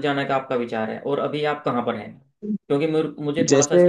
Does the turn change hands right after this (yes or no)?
no